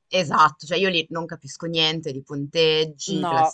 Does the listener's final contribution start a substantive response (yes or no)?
no